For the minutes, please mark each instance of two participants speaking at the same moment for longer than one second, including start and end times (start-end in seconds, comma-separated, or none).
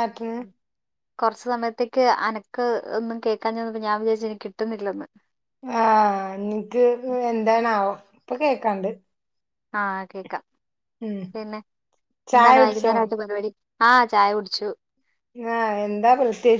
none